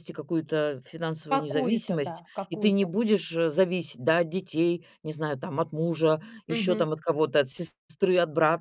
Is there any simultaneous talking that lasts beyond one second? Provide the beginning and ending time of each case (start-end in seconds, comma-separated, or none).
1.3-2.9